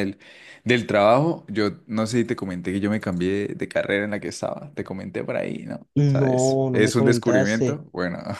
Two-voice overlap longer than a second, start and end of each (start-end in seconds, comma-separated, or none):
5.9-7.8